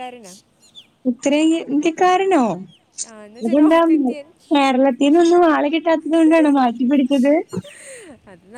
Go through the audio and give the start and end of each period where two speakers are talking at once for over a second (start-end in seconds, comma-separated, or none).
none